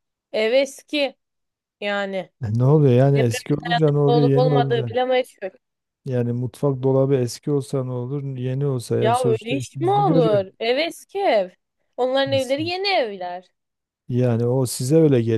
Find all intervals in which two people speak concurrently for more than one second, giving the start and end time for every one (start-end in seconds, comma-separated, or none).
3.1-4.9, 9.0-10.5